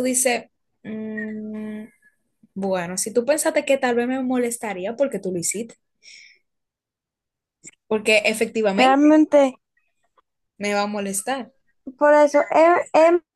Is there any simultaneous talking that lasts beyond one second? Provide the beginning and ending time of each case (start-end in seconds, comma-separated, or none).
none